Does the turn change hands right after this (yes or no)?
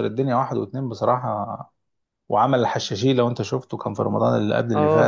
yes